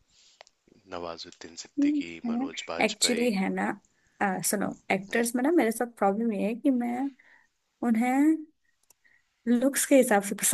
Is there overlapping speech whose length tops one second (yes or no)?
yes